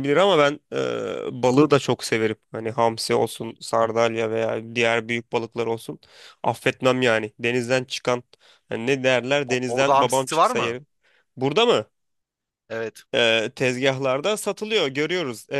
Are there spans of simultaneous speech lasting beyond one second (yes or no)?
yes